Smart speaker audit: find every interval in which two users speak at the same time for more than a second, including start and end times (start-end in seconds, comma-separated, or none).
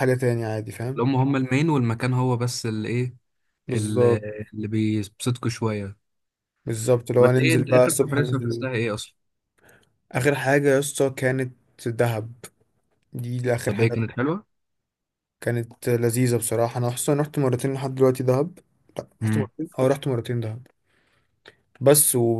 7.2-8.7